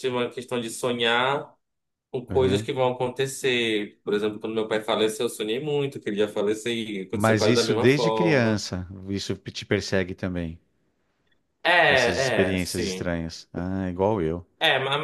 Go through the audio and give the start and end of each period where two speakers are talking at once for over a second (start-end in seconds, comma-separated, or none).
7.1-8.6, 11.9-13.1